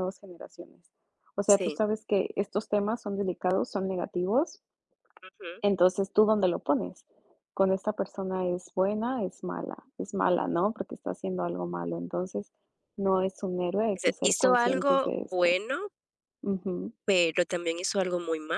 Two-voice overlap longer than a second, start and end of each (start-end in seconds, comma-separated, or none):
13.9-15.6